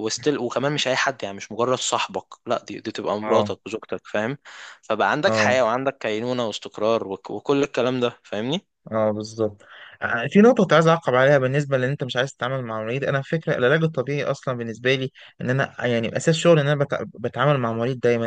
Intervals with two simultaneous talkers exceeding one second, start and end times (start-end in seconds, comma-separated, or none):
none